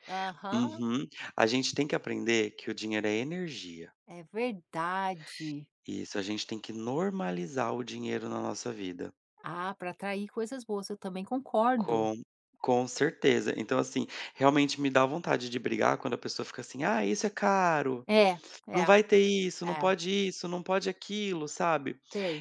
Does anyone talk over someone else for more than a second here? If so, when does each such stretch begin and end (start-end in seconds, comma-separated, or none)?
none